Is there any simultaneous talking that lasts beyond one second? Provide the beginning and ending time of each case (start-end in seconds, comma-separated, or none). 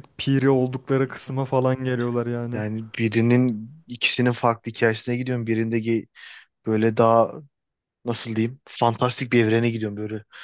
none